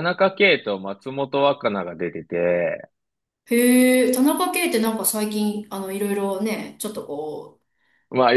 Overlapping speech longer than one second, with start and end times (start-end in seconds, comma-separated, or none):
none